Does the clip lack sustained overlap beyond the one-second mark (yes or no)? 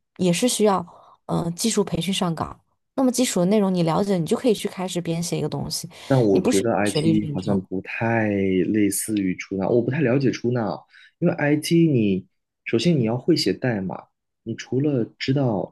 no